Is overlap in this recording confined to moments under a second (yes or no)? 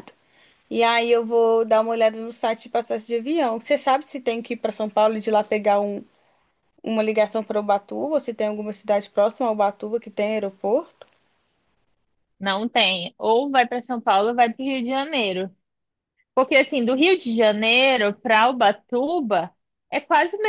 yes